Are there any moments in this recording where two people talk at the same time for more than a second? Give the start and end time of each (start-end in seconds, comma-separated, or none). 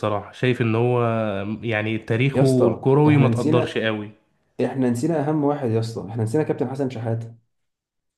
2.3-3.8